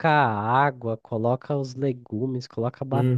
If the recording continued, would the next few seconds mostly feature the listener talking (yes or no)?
no